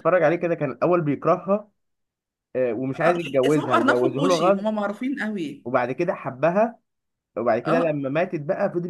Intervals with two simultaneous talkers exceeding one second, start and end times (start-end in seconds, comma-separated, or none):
2.9-4.7